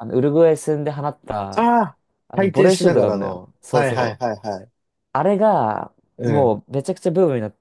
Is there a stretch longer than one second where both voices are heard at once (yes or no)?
yes